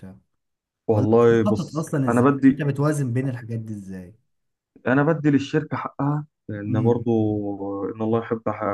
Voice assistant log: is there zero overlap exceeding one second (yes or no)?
no